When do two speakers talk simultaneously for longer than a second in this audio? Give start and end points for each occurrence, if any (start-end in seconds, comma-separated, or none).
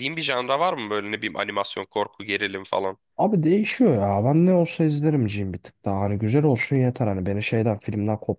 none